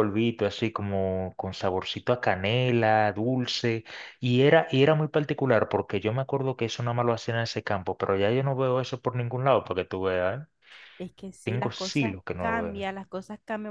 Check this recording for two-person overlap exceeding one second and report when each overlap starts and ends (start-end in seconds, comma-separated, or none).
11.4-12.9